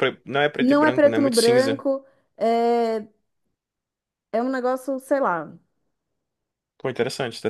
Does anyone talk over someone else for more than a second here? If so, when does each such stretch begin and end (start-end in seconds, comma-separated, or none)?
0.6-1.8